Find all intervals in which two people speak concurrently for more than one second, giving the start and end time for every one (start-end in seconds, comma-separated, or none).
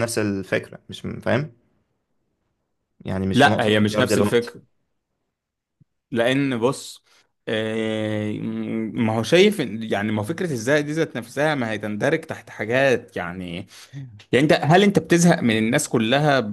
3.3-4.5